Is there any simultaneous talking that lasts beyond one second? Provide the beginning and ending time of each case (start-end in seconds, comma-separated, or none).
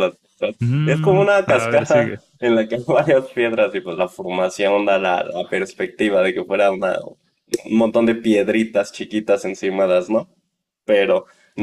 0.6-2.2